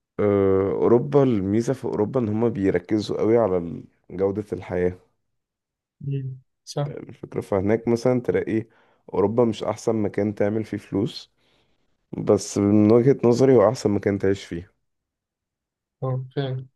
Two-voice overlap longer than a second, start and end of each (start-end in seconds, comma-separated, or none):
none